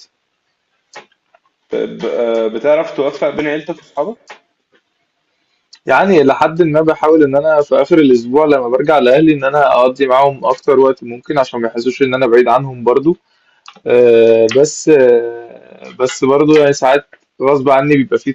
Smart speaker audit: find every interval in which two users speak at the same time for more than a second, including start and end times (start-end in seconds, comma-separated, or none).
none